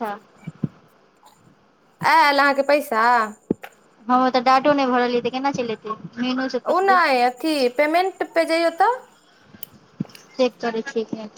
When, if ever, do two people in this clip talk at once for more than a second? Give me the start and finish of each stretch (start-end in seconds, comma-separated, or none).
none